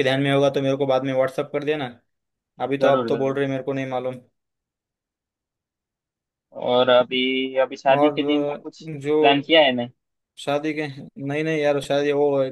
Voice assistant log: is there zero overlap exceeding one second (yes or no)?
no